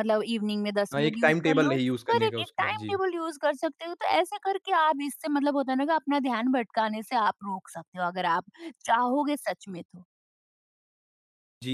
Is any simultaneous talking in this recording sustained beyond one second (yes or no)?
yes